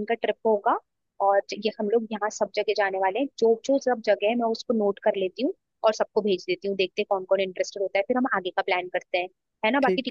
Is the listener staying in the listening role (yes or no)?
yes